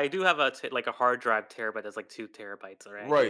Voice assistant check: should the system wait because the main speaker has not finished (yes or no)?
no